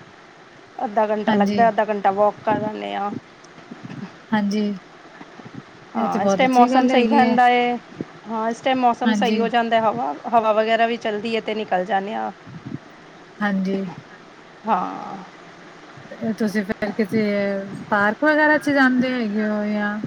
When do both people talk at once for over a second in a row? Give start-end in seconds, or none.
5.9-7.4